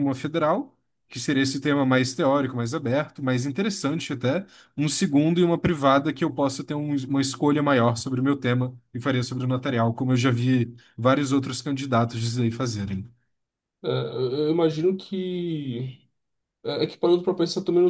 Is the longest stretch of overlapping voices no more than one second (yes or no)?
yes